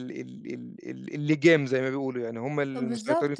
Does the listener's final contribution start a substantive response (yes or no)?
yes